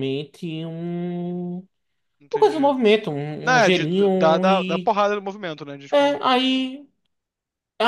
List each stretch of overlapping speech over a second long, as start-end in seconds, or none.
3.4-4.9